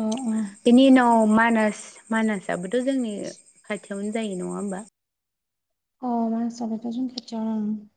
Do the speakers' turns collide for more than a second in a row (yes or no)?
no